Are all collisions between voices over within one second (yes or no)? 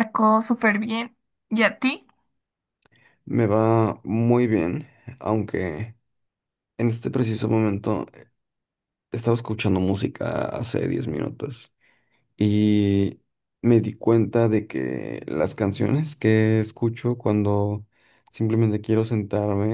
yes